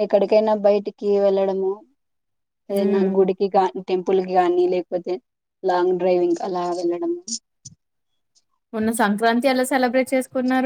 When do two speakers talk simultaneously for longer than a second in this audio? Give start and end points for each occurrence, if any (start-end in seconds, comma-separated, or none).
none